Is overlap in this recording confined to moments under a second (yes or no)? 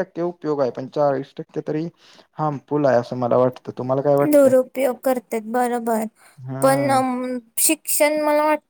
yes